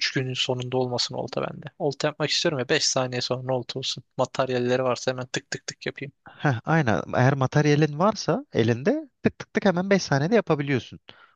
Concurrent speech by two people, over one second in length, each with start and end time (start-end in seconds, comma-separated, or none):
none